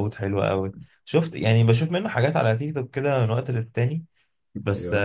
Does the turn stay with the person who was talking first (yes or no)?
yes